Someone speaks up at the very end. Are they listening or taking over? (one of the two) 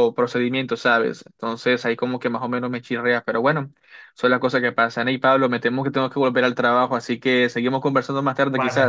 taking over